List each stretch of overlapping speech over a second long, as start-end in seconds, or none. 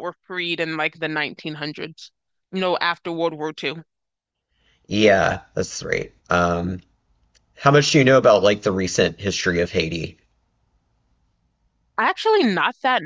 none